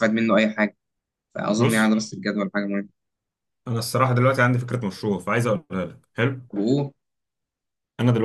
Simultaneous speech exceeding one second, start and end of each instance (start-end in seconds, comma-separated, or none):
none